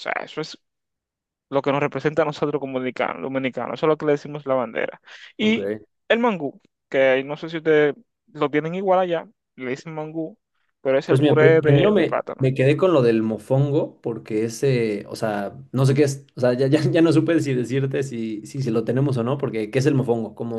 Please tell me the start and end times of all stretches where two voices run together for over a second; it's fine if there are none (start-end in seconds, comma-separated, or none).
11.1-12.5